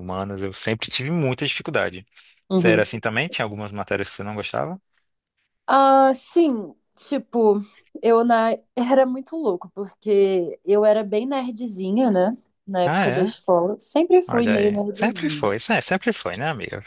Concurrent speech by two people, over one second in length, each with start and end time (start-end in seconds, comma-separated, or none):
14.3-15.5